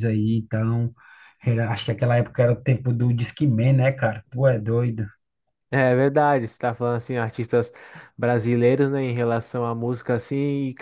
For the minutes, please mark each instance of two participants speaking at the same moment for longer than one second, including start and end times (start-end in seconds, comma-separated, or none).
none